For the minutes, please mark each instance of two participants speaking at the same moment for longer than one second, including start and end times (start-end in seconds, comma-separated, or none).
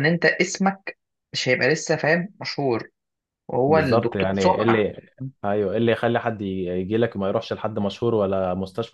3.7-4.9